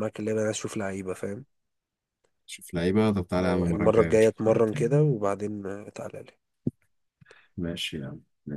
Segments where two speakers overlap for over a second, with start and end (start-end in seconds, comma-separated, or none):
3.4-4.7